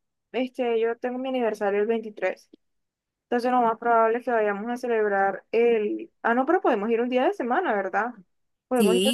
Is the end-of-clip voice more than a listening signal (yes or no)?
yes